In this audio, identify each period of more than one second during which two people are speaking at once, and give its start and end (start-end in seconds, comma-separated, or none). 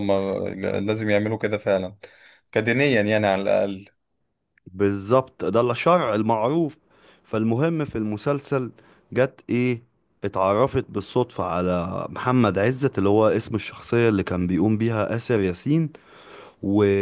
none